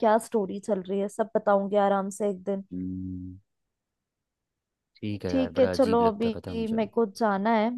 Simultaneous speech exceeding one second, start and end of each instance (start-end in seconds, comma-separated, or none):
5.3-6.8